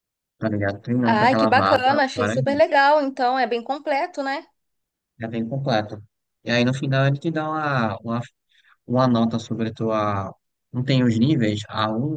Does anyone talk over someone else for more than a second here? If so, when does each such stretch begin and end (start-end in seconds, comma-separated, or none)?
1.0-2.8